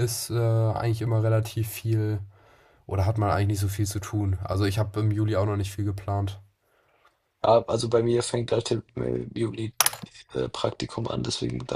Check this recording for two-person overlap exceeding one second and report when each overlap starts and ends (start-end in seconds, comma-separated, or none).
none